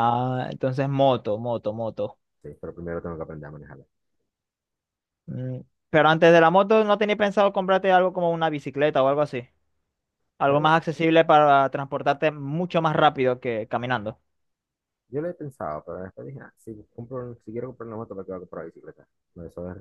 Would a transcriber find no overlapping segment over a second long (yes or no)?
yes